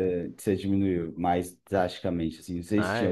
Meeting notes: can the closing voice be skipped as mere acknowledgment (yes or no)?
no